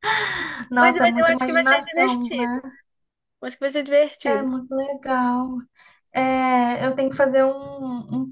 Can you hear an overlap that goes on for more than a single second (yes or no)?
yes